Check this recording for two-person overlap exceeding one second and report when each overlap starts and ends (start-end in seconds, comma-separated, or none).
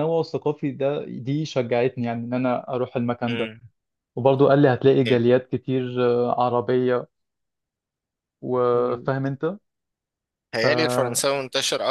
none